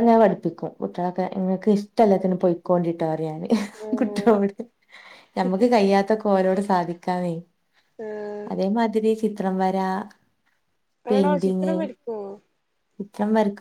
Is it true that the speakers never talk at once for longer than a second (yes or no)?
yes